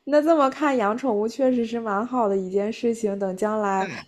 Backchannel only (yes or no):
yes